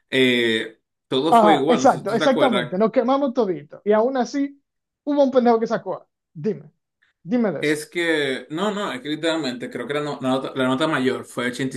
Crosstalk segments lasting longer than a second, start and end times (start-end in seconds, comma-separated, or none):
1.3-2.8